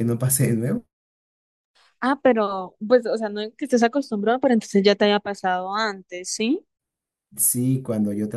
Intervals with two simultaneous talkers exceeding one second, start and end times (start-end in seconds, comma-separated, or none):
none